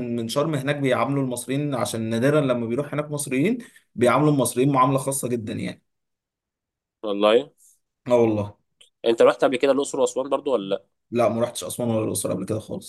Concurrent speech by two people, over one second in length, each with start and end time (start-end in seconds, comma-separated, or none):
none